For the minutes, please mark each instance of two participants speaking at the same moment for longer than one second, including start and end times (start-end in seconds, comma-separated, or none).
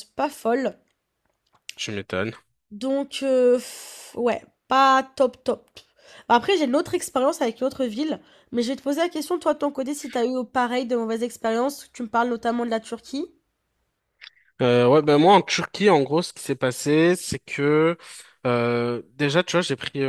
none